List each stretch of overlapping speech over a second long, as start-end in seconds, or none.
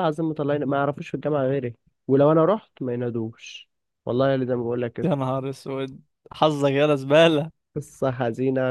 none